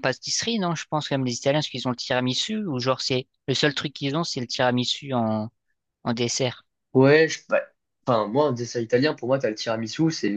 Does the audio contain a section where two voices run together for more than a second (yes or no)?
no